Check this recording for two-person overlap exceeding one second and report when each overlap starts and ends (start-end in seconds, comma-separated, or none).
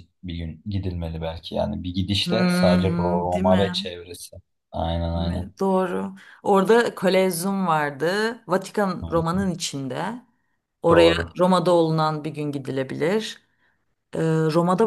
2.2-3.9